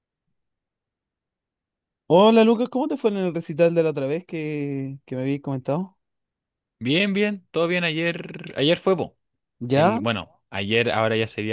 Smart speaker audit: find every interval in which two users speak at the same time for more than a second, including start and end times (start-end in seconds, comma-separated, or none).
none